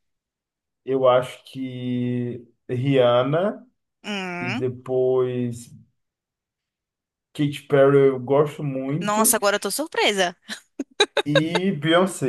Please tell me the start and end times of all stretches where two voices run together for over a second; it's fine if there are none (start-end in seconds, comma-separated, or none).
none